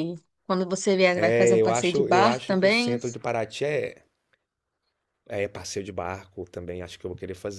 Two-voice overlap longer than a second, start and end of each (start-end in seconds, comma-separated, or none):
1.1-3.0